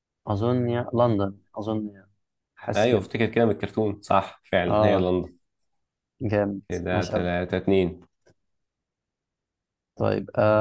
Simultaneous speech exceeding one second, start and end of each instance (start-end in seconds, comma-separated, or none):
none